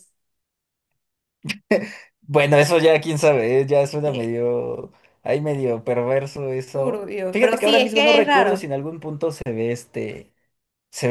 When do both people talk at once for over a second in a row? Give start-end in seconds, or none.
6.7-8.7